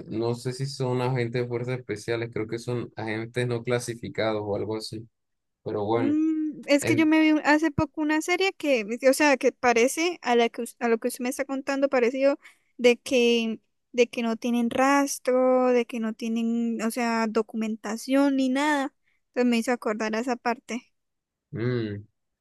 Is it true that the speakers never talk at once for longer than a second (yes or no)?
yes